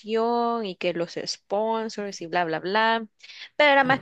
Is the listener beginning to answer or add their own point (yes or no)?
no